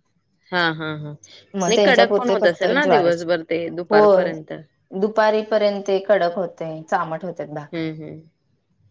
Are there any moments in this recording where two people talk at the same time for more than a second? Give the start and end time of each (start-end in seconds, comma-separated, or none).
1.7-3.2